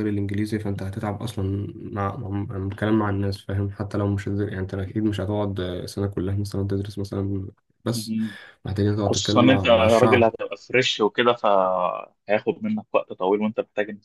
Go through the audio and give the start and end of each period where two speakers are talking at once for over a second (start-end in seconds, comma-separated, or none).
9.1-10.3